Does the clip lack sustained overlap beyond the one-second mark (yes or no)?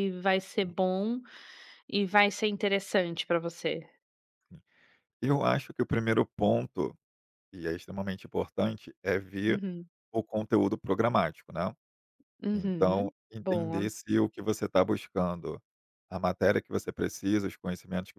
no